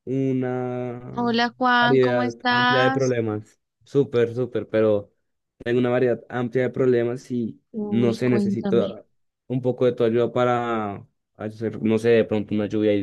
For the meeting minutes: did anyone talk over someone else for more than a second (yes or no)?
yes